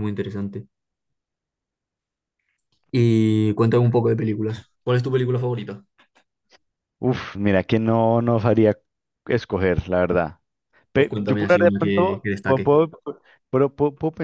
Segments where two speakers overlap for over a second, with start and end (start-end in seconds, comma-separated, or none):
10.9-12.7